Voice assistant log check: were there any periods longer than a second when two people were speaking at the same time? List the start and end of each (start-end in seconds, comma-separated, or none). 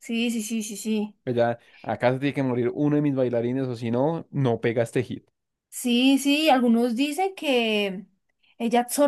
none